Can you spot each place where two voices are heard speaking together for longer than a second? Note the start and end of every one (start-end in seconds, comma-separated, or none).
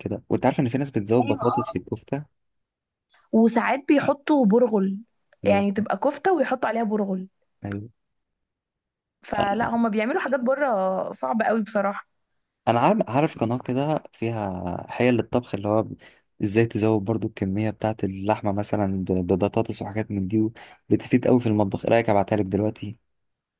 none